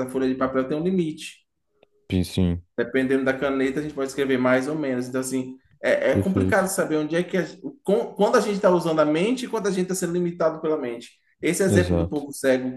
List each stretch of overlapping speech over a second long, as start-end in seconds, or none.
none